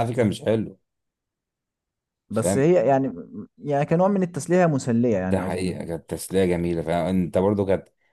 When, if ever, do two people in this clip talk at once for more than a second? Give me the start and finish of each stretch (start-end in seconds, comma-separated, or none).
none